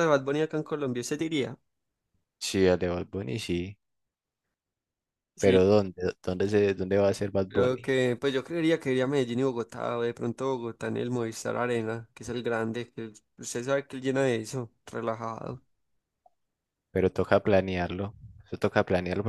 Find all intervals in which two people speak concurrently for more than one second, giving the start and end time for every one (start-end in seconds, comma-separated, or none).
none